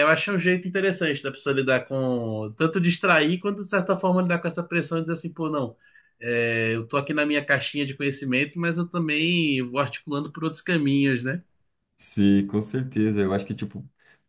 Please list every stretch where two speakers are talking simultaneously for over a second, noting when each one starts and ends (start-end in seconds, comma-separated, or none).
none